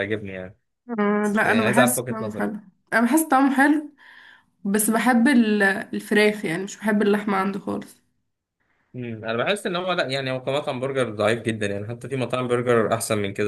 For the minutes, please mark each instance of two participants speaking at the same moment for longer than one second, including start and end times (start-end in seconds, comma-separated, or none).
1.2-2.6